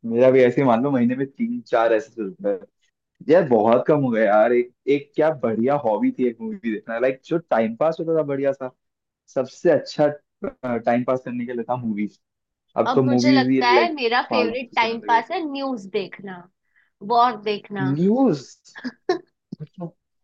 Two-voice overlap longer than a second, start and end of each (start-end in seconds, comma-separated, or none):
12.9-15.2